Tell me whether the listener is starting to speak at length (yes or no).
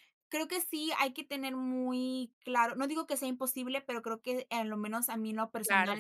no